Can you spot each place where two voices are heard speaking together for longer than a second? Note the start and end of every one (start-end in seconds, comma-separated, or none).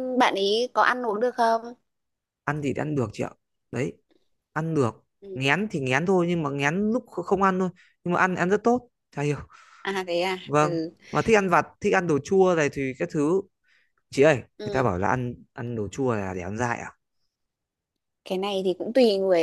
none